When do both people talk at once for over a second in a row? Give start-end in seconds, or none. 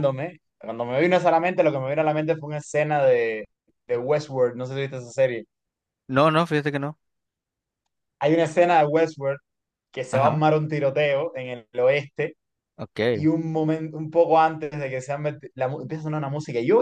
none